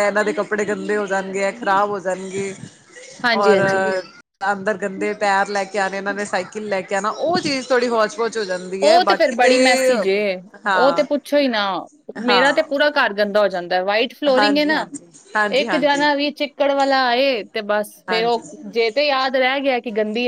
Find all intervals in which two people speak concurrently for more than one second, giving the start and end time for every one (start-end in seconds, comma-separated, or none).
none